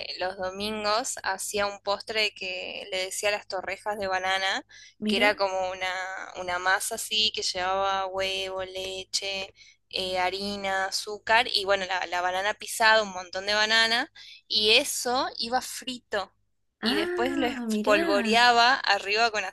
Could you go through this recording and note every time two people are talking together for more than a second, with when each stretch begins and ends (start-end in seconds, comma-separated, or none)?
16.8-18.4